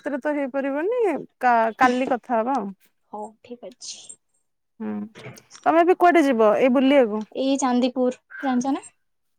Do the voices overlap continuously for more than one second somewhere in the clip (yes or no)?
no